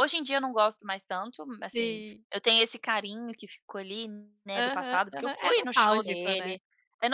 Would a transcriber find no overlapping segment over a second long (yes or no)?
no